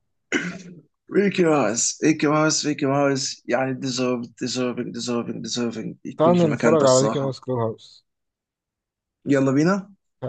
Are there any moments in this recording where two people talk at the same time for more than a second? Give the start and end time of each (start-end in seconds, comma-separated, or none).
6.2-7.4